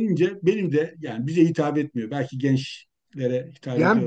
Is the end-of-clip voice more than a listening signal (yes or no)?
yes